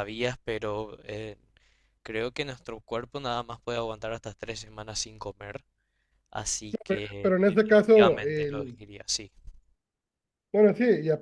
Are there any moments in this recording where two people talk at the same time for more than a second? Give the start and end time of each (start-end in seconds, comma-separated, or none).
7.2-8.8